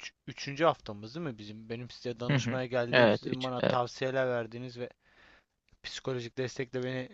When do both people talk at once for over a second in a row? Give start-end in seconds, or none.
2.3-3.9